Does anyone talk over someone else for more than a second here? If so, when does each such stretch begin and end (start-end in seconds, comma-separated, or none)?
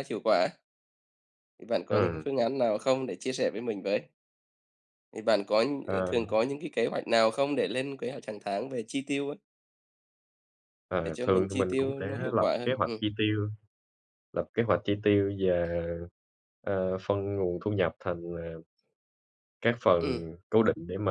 11.0-13.0